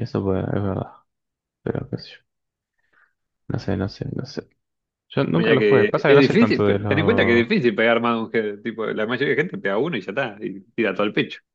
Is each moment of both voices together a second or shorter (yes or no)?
no